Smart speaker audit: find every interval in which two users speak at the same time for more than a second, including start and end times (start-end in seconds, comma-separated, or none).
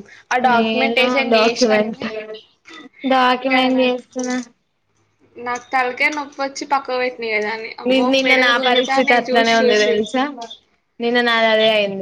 0.5-2.0, 7.9-9.9